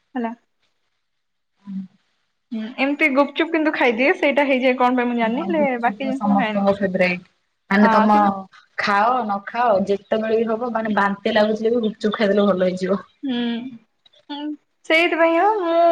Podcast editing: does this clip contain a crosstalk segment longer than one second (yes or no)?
yes